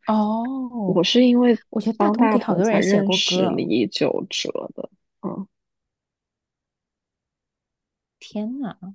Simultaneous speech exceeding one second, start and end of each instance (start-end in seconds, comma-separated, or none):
2.0-3.6